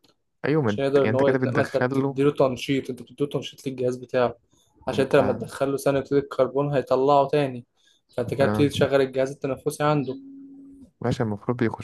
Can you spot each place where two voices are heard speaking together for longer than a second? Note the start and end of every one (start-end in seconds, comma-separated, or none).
0.7-2.2